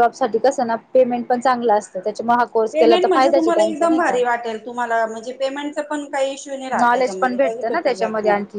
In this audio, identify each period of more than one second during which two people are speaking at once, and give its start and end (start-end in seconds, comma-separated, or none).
2.7-4.2